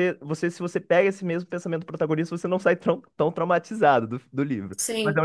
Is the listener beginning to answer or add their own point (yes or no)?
yes